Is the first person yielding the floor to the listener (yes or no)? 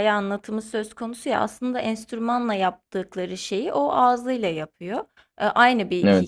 no